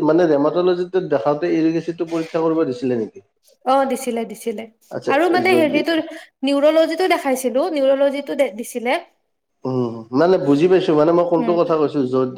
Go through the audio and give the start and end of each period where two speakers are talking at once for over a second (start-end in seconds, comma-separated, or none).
none